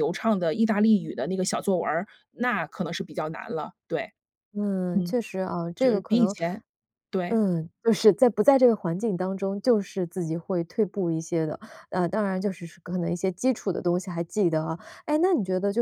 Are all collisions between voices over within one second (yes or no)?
yes